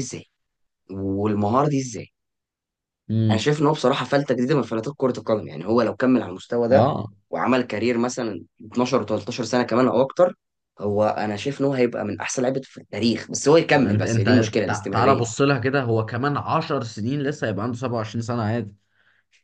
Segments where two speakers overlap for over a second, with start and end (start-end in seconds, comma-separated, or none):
13.7-15.2